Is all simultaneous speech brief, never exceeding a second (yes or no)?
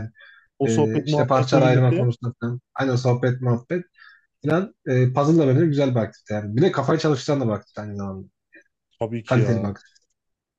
no